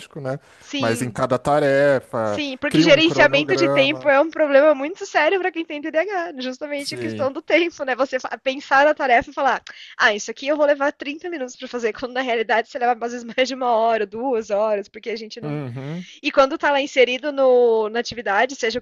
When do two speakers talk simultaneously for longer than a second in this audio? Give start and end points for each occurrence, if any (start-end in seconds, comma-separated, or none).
2.2-4.1